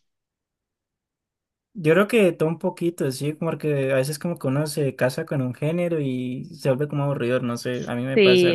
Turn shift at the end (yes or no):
yes